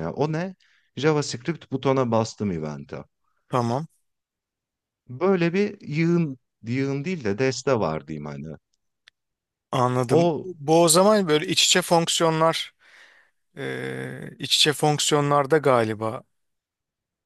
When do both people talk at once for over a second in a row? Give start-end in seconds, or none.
none